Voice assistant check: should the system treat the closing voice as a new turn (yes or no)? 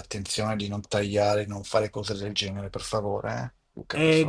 yes